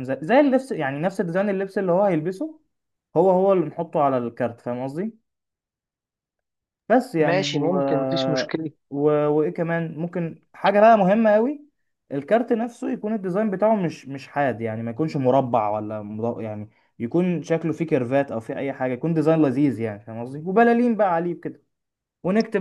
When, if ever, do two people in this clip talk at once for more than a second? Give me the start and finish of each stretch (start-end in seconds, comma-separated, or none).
none